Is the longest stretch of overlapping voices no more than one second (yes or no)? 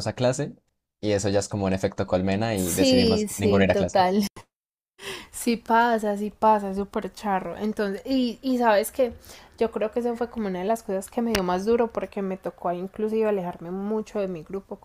no